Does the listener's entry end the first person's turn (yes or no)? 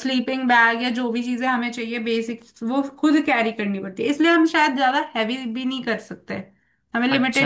yes